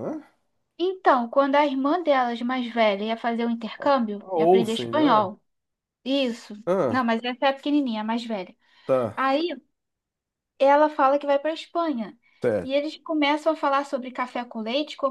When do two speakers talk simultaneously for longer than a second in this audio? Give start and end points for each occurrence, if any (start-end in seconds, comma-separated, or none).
3.8-5.2